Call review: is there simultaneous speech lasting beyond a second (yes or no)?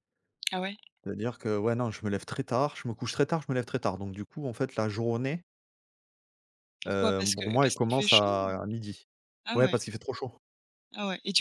yes